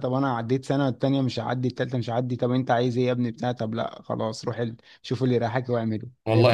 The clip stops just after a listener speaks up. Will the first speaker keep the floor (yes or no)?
no